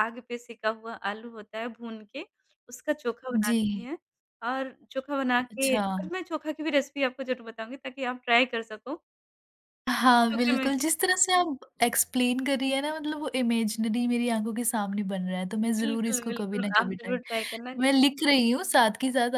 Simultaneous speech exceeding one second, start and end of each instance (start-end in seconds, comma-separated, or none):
15.6-17.2